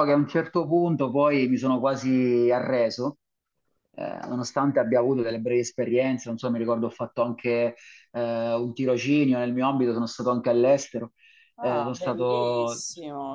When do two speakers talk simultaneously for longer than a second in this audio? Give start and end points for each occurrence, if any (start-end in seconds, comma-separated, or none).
11.6-12.8